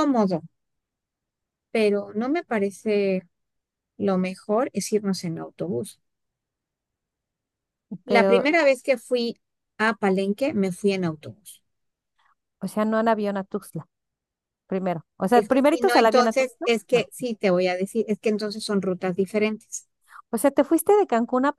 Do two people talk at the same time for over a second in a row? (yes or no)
yes